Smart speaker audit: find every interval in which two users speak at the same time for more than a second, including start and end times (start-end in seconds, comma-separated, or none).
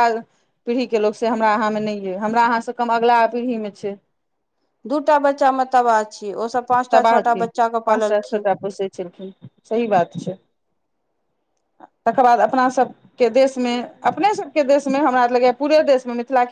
none